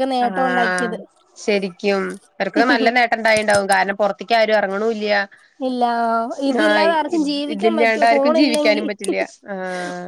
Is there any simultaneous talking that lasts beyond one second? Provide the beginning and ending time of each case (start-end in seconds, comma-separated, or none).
7.5-8.9